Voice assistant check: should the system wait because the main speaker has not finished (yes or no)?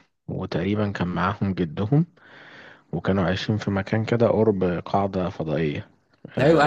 no